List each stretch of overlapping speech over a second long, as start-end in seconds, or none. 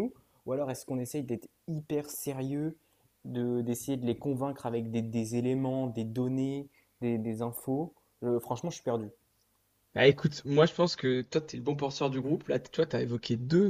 none